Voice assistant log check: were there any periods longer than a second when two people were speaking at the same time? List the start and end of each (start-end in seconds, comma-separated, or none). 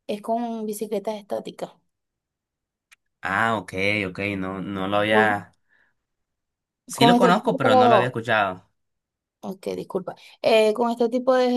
7.0-8.2